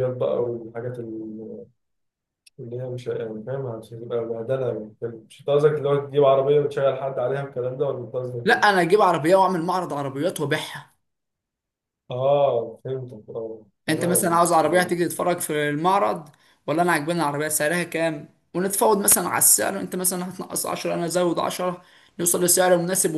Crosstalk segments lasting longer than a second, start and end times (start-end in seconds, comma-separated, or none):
none